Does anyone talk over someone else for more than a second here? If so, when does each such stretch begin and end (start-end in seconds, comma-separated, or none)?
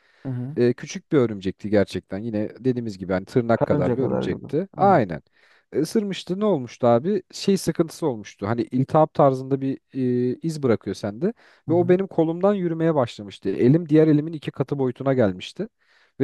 3.5-5.0